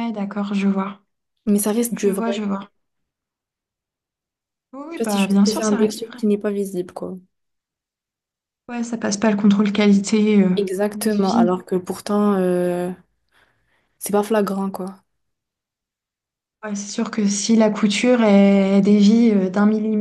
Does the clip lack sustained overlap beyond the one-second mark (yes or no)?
no